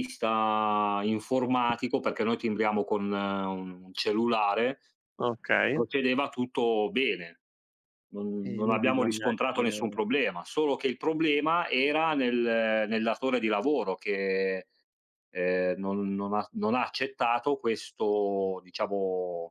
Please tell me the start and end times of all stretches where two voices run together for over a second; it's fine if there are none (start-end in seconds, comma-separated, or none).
8.4-10.0